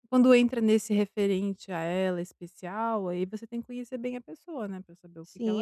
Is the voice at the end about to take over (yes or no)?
yes